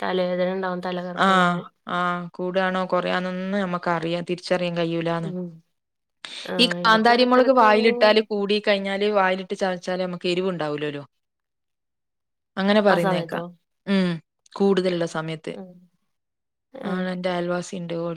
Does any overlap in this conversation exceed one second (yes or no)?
yes